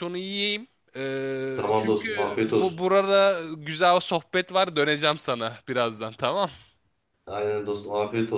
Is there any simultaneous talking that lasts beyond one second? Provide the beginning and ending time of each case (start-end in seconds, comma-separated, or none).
1.5-2.8